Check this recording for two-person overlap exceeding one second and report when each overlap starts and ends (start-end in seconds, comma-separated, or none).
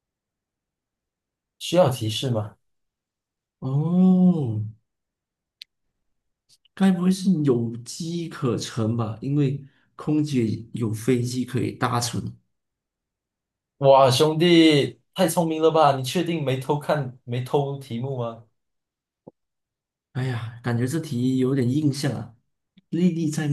none